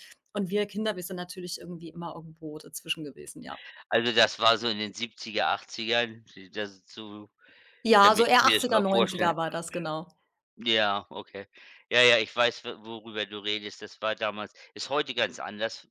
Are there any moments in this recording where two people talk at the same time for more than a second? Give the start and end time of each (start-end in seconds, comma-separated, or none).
8.0-9.3